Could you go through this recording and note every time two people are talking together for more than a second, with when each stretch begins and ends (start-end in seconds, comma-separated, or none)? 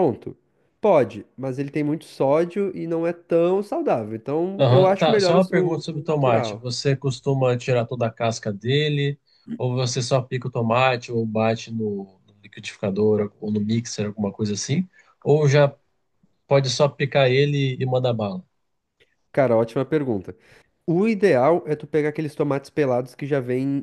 4.6-6.7